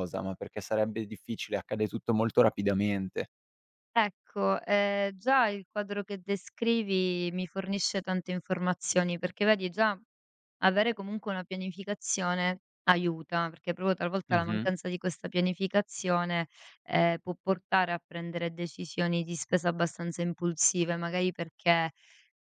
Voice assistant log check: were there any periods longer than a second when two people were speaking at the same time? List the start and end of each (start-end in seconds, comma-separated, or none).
none